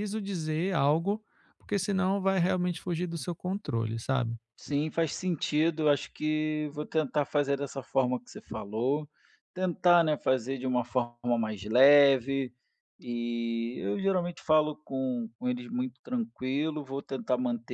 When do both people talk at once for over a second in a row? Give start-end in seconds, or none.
none